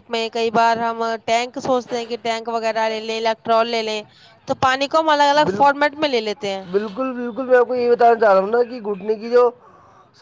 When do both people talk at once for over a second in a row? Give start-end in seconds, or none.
none